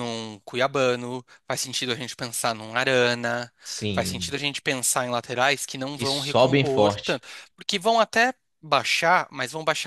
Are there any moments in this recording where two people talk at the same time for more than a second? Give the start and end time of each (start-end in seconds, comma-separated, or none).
5.9-7.2